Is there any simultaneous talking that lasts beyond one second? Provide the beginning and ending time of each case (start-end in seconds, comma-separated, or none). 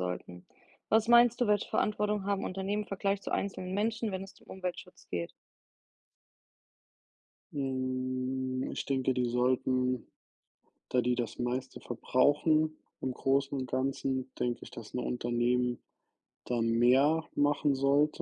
none